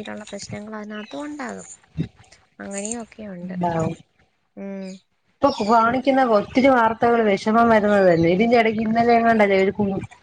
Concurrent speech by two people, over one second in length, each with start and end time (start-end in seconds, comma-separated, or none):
none